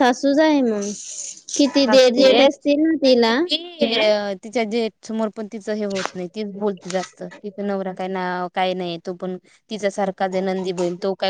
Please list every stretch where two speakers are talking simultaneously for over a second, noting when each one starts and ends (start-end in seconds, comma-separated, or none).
none